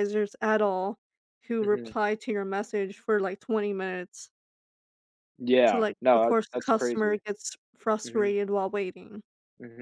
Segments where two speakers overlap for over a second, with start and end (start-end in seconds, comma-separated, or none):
5.7-7.2